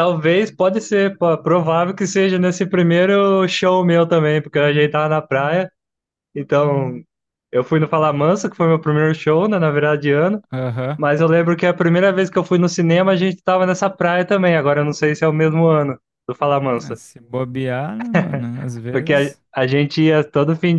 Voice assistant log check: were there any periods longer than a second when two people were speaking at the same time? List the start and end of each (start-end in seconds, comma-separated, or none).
none